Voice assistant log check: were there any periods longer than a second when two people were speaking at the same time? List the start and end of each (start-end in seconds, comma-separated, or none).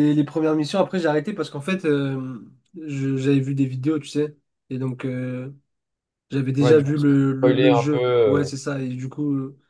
6.6-8.5